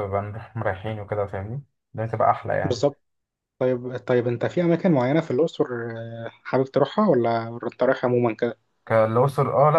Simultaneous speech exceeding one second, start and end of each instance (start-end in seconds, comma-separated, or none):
none